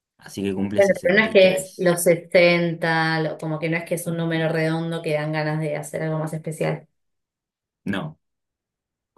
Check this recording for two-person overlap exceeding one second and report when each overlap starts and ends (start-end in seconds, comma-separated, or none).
0.8-2.0